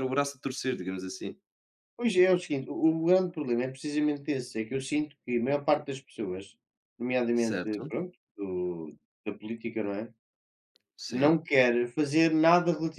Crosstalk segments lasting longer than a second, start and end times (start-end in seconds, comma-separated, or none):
none